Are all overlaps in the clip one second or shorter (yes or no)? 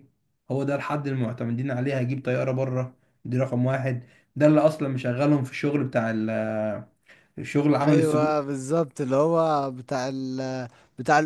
yes